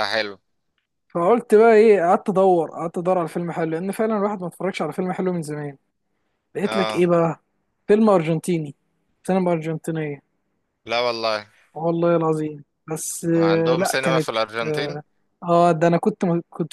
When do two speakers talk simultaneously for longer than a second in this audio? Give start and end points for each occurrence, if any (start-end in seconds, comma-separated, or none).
13.4-15.0